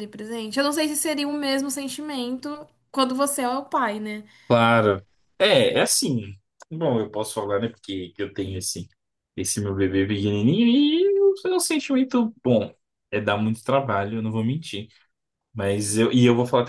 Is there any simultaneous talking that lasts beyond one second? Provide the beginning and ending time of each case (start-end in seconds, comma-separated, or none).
none